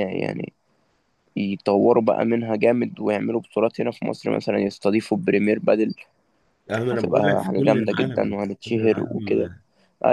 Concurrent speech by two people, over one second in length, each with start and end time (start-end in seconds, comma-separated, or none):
6.9-9.5